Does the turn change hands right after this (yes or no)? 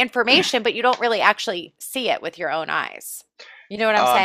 yes